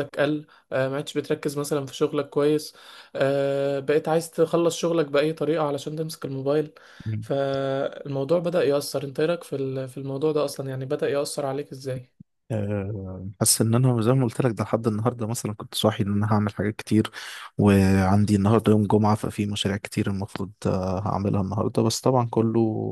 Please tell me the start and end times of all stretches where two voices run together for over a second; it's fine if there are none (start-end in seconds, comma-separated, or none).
none